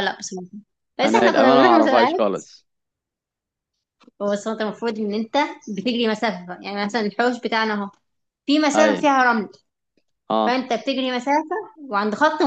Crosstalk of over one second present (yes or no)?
yes